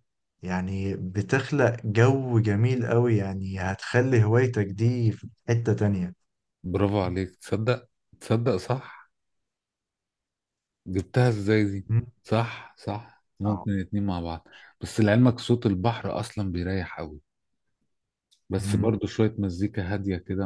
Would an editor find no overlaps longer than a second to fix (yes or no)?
yes